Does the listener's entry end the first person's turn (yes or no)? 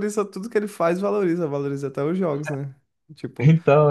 no